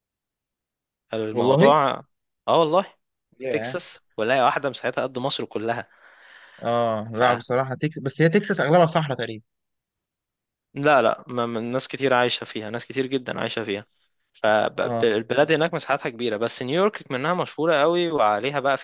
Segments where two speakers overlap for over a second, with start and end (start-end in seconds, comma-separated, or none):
none